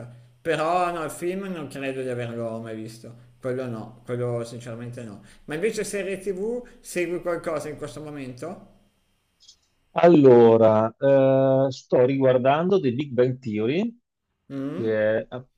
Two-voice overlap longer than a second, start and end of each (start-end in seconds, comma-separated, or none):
none